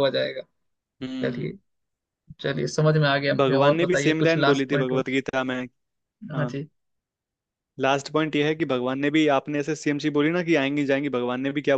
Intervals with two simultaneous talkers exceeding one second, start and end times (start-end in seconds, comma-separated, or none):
3.4-5.0